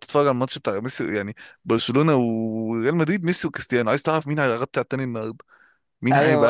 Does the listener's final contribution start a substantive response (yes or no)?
yes